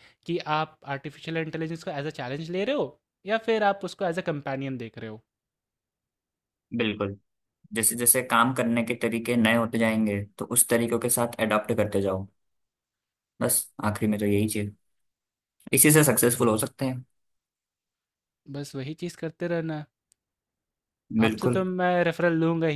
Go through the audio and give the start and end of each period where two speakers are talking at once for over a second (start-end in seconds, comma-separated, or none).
none